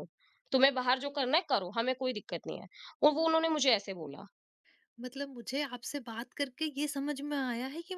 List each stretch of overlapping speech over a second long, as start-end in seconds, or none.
none